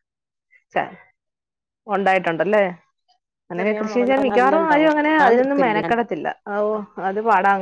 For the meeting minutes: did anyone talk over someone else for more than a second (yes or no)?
yes